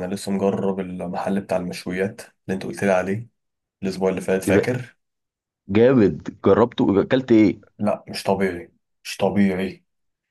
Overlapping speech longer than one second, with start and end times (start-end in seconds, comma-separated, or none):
none